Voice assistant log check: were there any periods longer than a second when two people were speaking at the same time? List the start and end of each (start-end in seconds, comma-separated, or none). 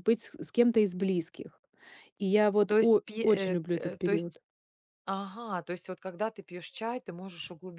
2.7-4.4